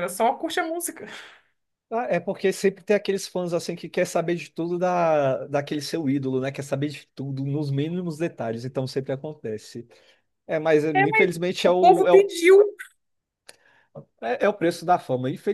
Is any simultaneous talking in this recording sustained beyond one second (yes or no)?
yes